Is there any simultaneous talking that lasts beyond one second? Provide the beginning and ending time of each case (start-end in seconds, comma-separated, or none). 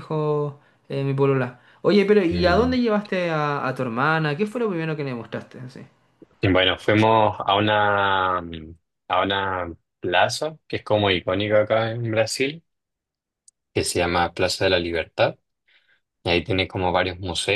none